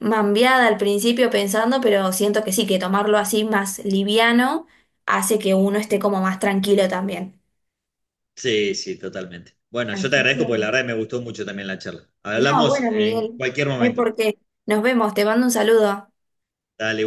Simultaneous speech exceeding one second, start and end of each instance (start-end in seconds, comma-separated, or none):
12.3-14.1